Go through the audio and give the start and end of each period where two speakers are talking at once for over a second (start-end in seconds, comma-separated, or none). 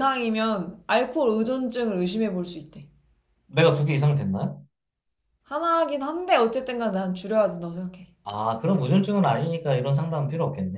none